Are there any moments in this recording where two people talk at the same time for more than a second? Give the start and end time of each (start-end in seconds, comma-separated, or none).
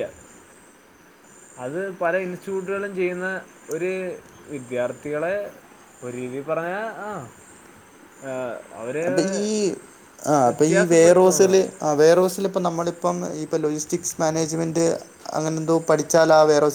none